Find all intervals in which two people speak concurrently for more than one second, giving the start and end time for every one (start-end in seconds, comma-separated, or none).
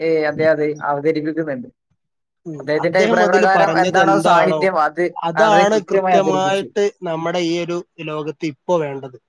5.4-6.7